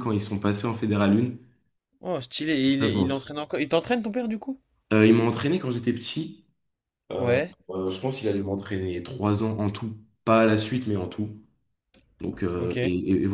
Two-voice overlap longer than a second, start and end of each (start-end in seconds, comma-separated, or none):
none